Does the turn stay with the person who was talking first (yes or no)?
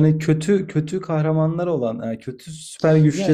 no